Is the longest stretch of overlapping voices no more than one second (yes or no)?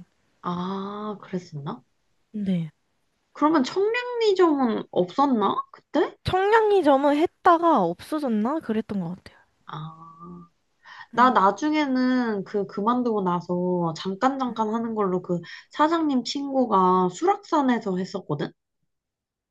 yes